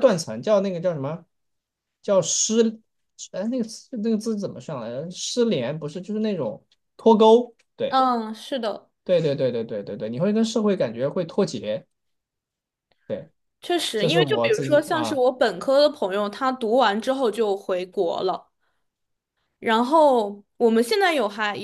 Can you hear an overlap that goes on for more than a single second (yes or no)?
yes